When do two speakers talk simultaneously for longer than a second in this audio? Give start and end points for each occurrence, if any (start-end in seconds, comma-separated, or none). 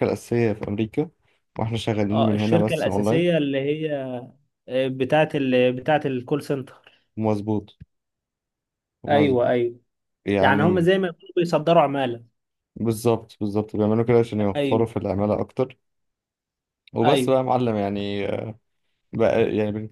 2.1-3.4